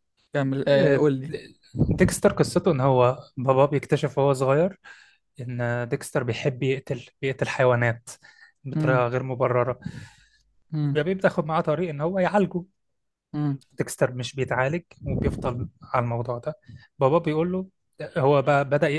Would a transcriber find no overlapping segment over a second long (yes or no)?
yes